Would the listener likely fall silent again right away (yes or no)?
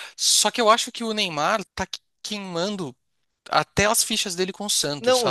no